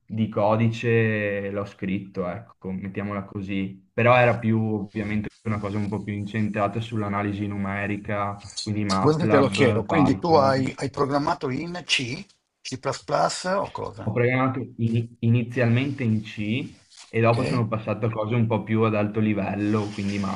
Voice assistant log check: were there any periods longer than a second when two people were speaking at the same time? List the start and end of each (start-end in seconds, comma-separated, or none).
9.0-10.8